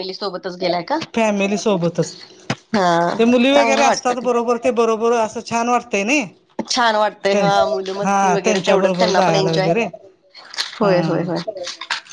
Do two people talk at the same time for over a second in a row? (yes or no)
yes